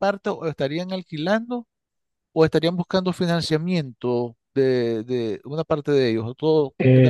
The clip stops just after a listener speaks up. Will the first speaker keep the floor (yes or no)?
no